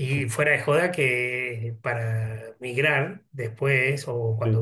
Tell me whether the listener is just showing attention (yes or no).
yes